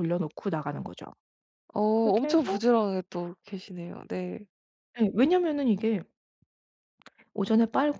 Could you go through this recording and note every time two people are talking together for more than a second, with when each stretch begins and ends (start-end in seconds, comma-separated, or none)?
none